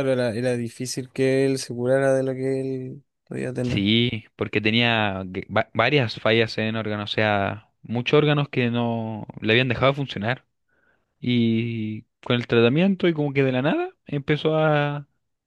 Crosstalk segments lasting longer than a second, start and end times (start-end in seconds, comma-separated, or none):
none